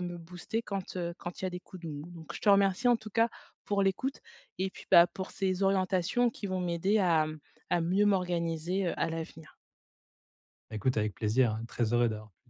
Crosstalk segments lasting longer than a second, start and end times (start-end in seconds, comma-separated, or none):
none